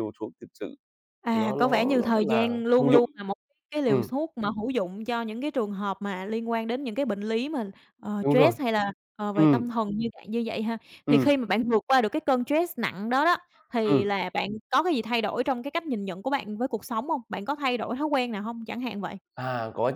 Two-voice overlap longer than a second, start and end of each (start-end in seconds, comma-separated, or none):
1.3-3.0